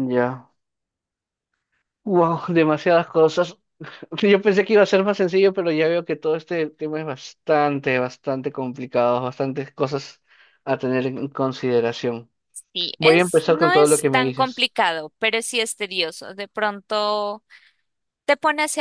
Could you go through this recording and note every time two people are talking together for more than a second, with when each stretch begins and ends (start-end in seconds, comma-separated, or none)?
13.0-14.7